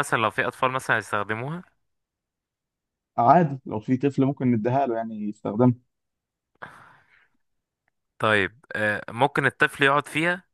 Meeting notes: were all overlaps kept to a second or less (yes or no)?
yes